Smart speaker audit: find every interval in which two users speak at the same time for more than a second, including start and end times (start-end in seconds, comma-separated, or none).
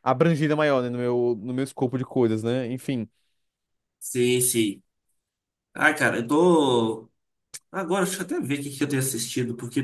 none